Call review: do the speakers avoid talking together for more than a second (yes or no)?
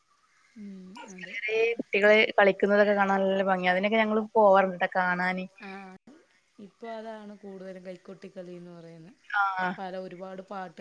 yes